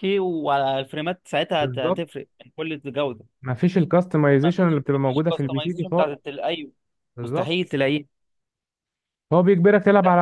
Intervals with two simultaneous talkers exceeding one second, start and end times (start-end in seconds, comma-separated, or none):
4.3-6.2